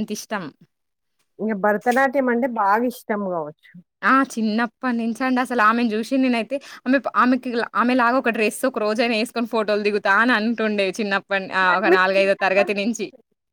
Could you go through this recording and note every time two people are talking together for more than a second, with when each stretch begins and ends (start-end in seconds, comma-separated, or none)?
none